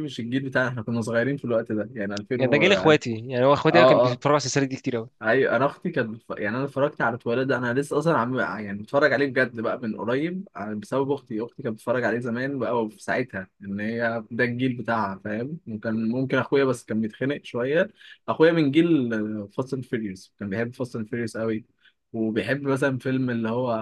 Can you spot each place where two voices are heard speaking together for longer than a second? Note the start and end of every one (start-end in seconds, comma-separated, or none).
none